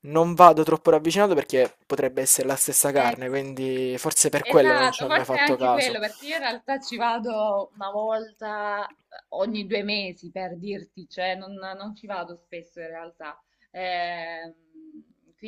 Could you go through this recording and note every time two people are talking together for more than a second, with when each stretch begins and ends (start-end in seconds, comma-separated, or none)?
4.4-6.0